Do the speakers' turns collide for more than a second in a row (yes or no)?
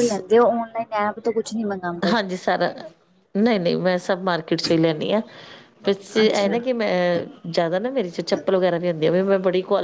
no